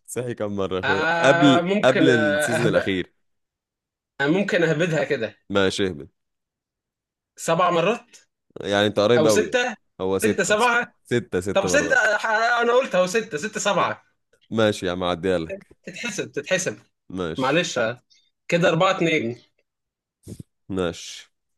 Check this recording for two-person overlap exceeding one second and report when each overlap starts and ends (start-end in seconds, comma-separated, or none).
0.8-2.9